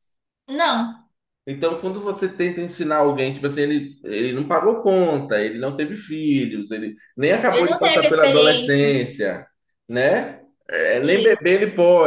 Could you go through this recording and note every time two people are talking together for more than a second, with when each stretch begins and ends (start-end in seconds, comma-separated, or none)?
7.5-8.9